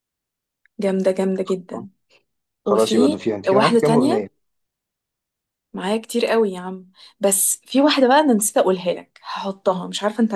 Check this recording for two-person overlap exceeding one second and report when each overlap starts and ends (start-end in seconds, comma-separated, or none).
2.6-4.3